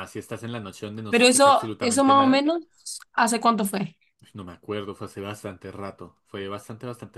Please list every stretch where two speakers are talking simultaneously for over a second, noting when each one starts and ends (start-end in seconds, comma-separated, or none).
1.1-2.5